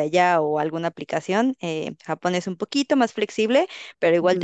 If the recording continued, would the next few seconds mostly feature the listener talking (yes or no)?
no